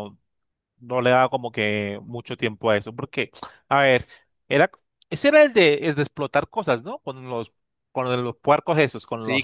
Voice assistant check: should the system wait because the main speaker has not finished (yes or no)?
no